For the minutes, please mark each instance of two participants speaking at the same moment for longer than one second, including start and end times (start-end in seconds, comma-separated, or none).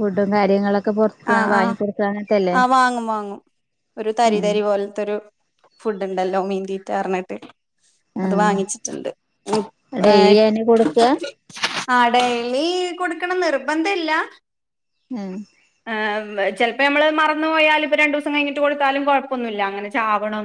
none